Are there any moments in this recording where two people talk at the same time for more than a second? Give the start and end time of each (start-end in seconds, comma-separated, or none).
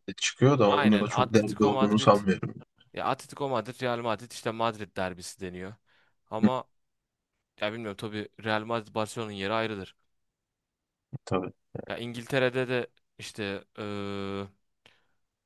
0.7-2.1